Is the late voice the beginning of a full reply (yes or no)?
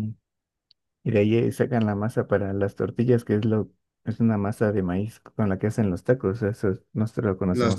yes